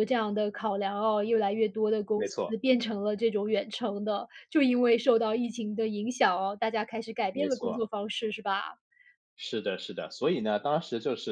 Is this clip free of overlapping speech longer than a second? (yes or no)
yes